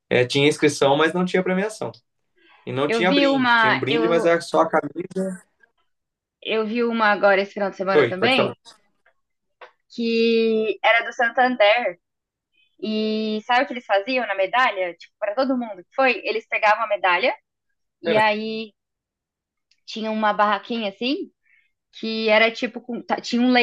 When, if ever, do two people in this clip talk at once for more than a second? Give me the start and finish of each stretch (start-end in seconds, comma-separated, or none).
2.9-4.3